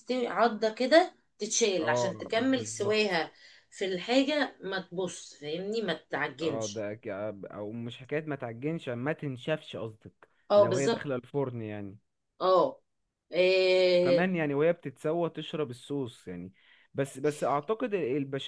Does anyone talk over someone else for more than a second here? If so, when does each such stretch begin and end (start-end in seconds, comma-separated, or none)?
1.8-3.2